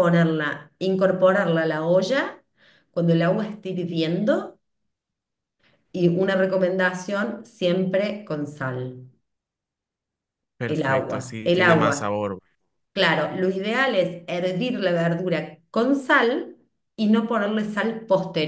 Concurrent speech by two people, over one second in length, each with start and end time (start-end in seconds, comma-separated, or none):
10.7-12.2